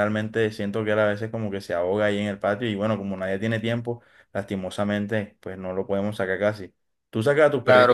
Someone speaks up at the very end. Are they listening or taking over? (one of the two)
taking over